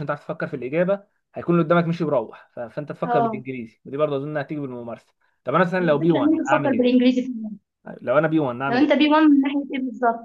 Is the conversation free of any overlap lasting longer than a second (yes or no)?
no